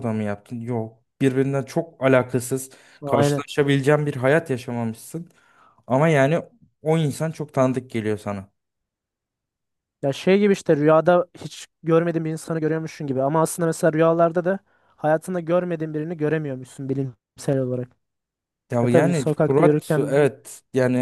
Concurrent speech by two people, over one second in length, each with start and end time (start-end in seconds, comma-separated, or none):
18.8-20.3